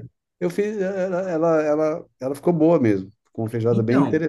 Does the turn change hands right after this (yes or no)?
yes